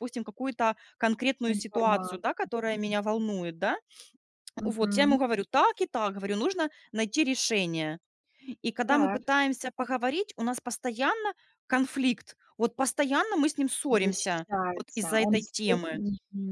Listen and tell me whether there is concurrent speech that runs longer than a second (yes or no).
yes